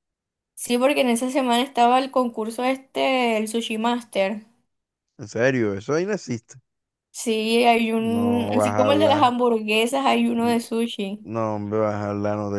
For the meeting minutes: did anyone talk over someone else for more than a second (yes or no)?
yes